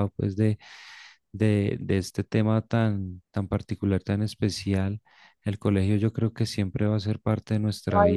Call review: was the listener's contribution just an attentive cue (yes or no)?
no